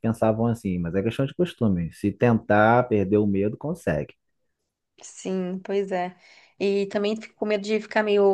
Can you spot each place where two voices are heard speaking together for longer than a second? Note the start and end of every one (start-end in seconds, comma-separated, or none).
none